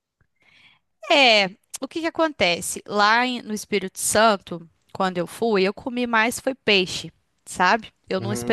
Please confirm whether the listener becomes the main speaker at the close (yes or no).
no